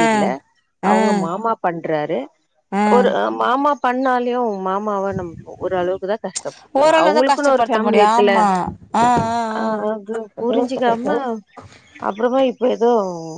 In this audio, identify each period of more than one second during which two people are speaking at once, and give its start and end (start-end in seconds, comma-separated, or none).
6.8-8.3